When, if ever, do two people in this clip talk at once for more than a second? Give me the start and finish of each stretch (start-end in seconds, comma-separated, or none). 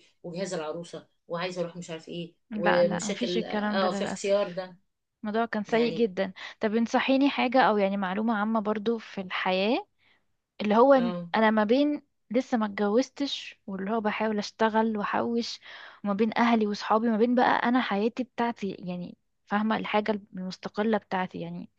2.5-4.6